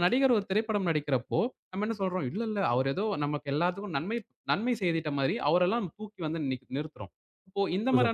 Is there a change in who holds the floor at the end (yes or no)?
no